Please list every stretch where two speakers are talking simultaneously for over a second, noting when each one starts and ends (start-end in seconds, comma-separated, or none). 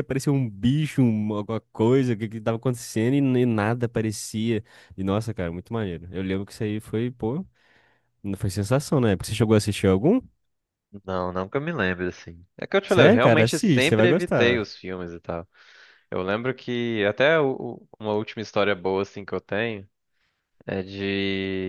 12.9-14.7